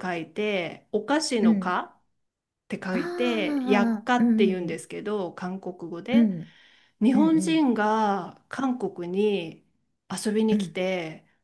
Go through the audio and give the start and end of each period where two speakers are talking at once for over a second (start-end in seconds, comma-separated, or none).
2.9-4.8